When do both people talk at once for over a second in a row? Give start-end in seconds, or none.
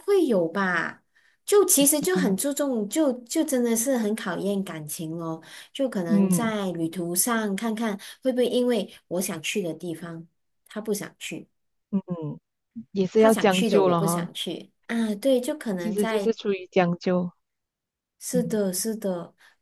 13.1-14.3